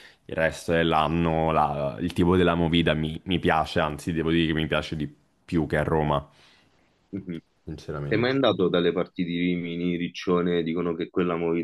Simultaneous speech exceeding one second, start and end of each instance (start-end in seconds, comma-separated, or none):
none